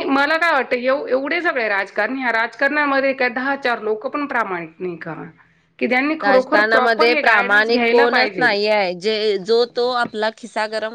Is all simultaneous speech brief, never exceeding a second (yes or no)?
no